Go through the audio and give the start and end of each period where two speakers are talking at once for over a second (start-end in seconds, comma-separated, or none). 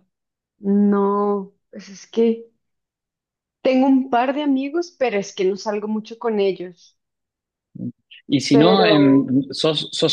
none